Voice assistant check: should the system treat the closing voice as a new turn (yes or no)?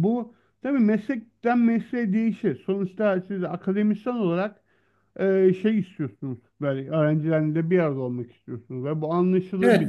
yes